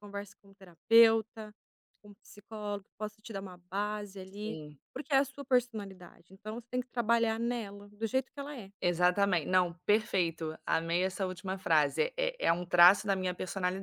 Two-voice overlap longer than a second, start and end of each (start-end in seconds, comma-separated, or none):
none